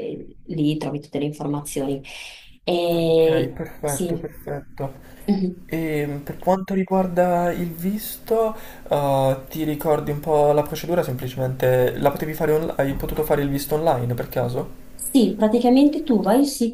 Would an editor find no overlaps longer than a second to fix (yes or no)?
no